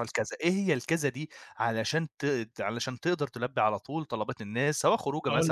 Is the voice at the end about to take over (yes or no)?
no